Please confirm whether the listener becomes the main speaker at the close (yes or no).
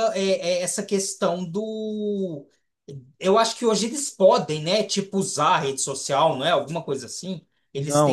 yes